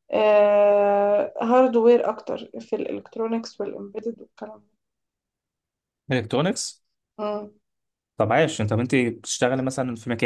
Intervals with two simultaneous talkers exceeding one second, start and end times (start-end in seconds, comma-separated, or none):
none